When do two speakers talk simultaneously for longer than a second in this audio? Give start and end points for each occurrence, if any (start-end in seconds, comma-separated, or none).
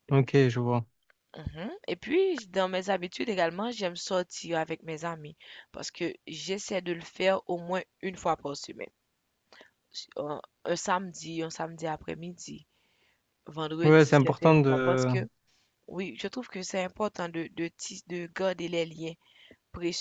13.8-15.1